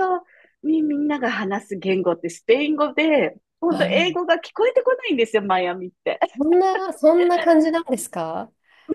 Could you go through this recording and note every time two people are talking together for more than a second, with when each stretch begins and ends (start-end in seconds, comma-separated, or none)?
none